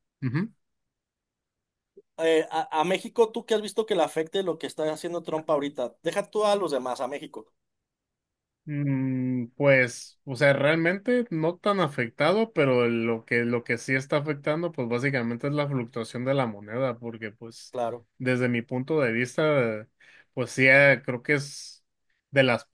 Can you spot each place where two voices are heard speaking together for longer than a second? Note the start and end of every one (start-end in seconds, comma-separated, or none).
none